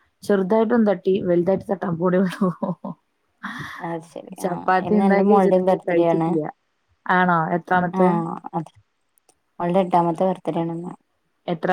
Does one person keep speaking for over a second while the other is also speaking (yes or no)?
yes